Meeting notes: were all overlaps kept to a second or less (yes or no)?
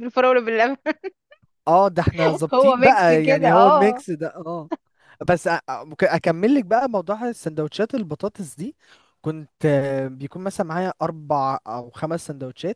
no